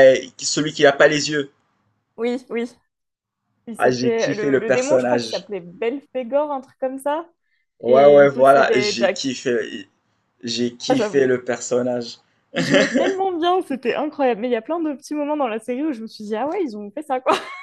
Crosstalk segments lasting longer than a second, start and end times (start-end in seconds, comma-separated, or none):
3.8-5.5, 7.8-9.3